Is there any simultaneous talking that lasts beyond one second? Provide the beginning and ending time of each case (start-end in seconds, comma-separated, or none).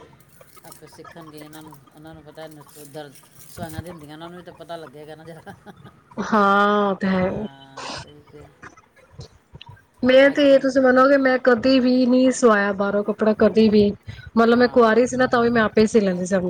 none